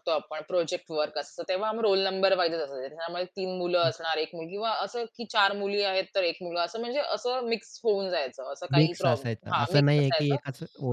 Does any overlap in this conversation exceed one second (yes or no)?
yes